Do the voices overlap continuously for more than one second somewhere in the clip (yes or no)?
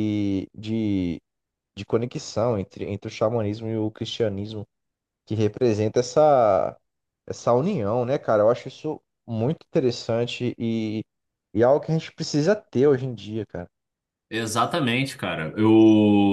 no